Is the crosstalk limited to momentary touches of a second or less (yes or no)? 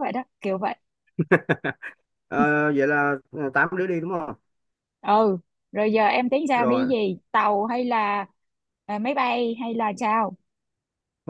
yes